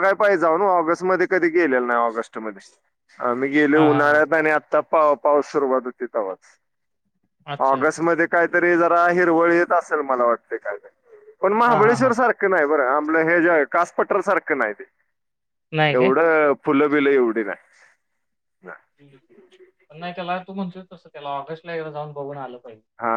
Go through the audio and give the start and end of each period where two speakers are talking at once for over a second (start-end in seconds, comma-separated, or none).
none